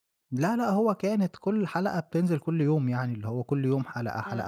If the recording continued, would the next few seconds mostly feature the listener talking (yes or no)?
yes